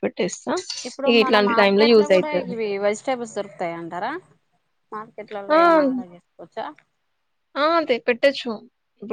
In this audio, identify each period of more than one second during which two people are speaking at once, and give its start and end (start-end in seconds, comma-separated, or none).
none